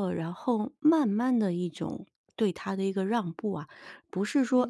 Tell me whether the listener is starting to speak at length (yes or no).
no